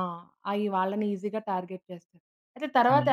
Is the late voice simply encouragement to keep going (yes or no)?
yes